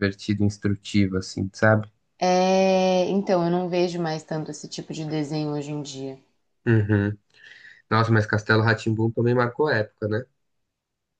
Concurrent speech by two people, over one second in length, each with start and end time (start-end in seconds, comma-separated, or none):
none